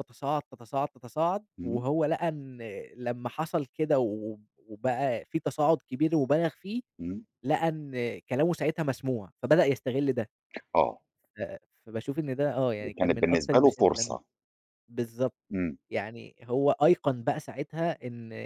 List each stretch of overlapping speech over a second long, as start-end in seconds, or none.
12.8-14.2